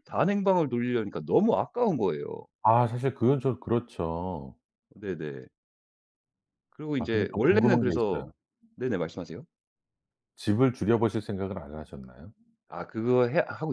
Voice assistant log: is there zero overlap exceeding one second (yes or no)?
no